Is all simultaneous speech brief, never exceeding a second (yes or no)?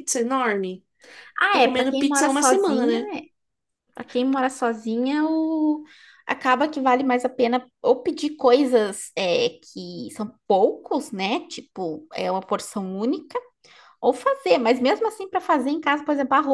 no